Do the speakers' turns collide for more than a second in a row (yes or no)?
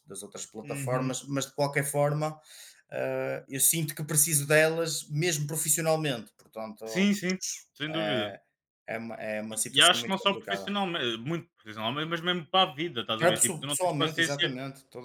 yes